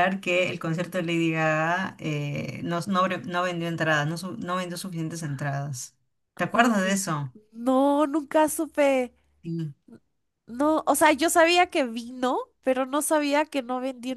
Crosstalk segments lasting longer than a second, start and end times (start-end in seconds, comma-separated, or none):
none